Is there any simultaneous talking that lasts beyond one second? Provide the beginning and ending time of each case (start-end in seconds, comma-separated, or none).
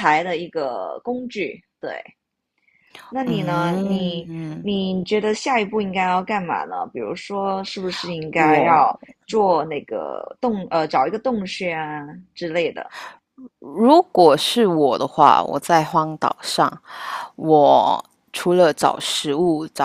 3.2-4.7